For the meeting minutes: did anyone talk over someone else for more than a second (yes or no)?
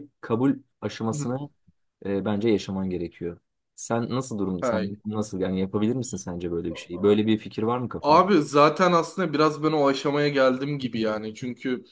no